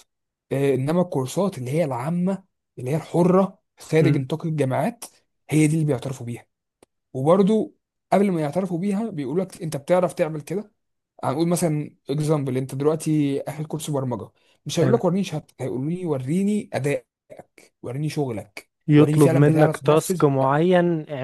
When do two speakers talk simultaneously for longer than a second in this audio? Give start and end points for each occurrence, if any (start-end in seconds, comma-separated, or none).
18.9-20.2